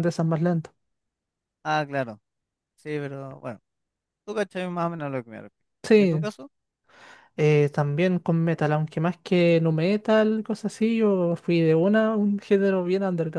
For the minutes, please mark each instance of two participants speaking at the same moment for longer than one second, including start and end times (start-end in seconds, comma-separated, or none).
none